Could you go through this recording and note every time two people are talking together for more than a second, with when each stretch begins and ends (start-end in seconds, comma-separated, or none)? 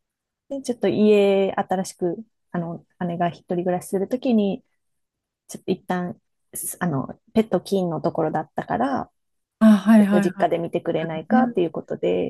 10.0-11.4